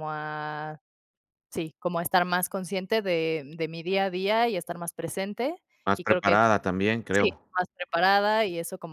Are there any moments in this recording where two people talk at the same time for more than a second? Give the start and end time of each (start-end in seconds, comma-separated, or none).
none